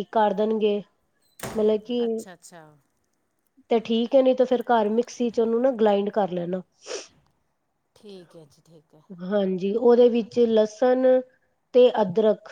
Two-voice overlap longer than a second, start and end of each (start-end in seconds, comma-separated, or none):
none